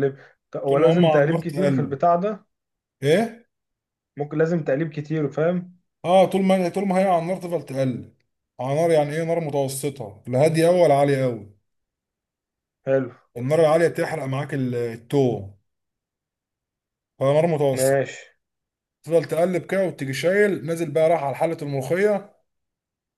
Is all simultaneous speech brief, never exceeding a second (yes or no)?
no